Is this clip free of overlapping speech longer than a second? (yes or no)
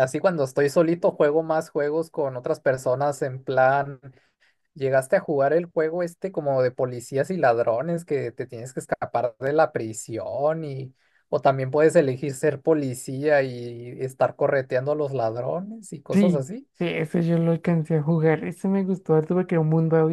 yes